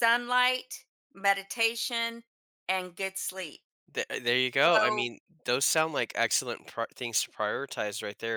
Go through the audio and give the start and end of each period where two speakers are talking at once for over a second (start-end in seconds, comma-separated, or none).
none